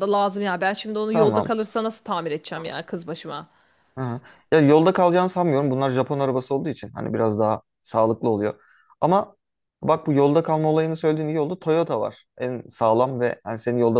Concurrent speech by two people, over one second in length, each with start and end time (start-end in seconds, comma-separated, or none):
none